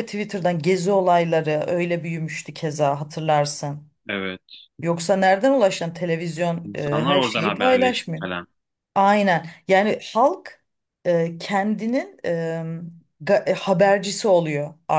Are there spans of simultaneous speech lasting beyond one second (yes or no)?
yes